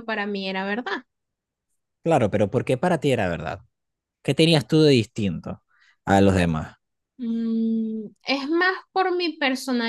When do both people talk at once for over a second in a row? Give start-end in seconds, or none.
none